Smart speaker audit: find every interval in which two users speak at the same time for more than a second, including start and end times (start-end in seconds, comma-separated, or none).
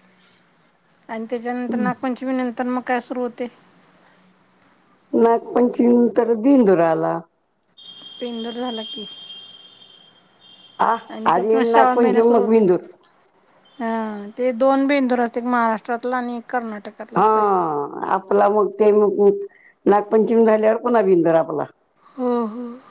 11.2-12.7